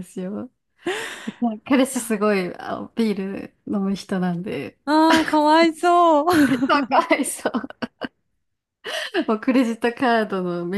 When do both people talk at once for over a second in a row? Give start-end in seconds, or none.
none